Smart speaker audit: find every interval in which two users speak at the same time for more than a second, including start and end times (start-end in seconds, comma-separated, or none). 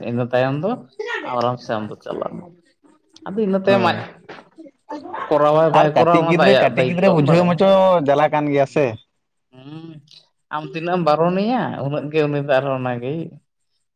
5.8-7.6